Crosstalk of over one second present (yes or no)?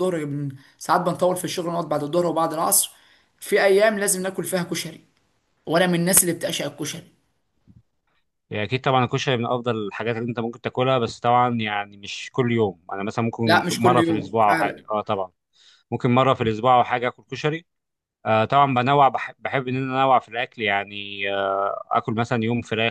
yes